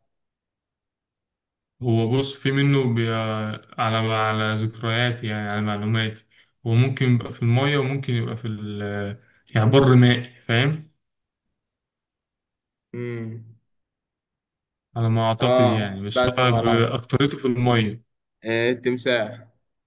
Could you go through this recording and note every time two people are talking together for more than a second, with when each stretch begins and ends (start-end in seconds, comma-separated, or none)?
15.4-17.1